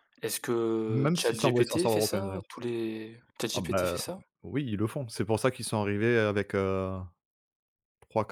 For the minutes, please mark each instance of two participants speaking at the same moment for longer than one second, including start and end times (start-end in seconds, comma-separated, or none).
0.9-2.4